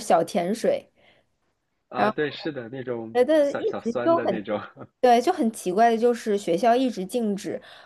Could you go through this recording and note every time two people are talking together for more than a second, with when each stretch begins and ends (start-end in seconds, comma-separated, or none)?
2.9-4.5